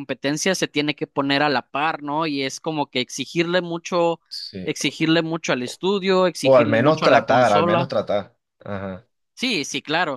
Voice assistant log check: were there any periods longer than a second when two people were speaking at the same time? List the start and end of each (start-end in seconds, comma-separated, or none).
6.4-7.9